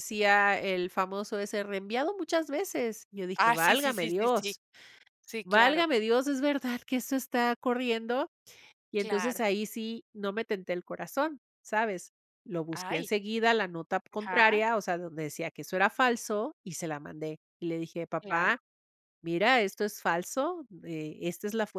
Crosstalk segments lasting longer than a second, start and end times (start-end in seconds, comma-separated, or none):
3.4-4.6